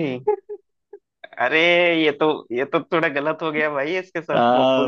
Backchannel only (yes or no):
no